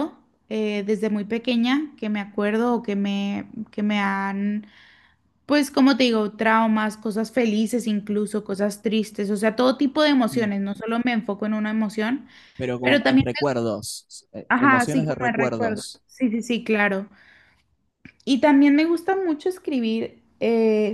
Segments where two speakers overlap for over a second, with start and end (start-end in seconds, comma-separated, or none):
14.5-16.0